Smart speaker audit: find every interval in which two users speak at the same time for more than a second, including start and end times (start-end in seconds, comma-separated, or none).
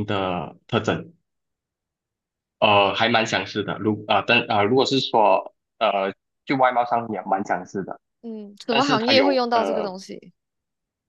8.7-9.9